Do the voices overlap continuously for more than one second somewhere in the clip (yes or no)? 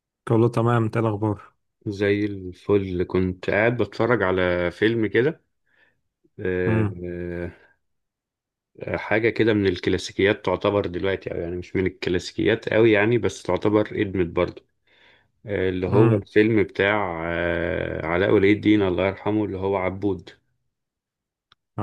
no